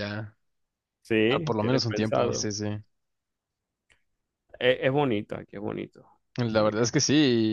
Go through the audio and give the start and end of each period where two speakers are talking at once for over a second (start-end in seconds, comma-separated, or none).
1.3-2.5